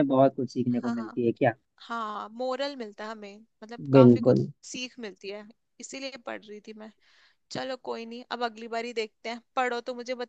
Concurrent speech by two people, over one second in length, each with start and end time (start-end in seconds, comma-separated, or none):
none